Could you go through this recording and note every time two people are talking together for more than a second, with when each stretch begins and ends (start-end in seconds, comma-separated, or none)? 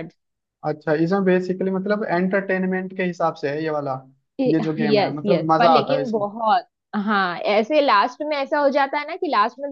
4.5-6.3